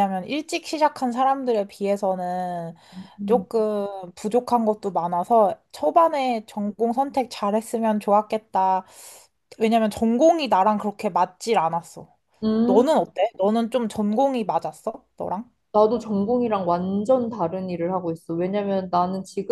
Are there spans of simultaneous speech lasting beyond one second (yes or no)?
no